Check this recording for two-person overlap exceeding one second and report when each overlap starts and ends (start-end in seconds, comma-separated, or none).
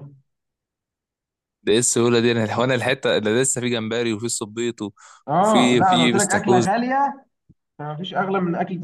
5.4-6.7